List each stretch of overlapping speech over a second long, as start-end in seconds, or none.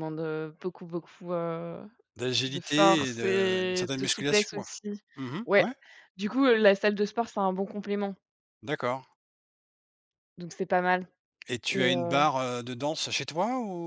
2.4-4.7